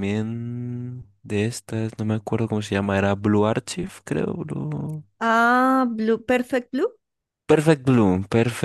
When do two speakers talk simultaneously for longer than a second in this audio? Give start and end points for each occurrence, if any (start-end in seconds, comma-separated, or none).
none